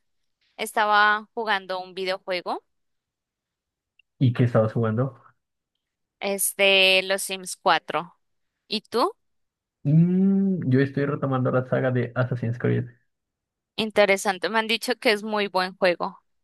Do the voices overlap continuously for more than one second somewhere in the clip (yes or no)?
no